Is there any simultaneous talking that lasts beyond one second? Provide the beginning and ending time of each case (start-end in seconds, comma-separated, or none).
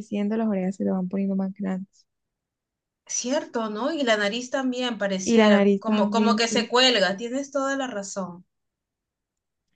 5.2-6.7